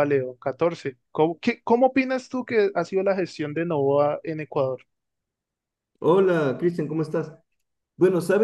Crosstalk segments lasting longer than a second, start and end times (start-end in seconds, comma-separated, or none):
none